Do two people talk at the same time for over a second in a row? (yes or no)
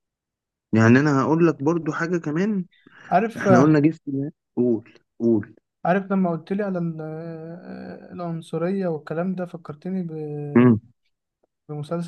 no